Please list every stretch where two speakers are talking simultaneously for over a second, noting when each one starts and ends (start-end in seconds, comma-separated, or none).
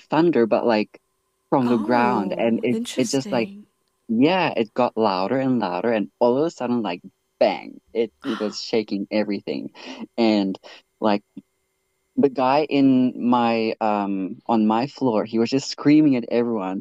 1.6-3.5